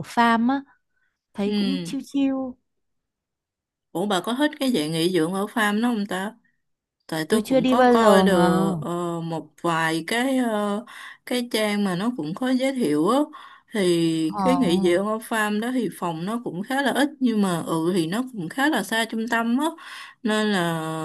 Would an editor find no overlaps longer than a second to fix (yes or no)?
no